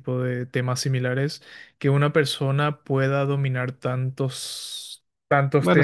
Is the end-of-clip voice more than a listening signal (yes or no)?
no